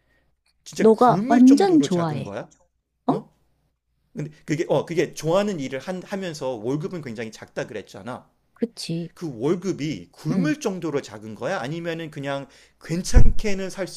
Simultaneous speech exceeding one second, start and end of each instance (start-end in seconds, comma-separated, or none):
0.8-2.3